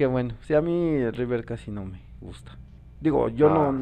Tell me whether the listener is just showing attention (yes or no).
yes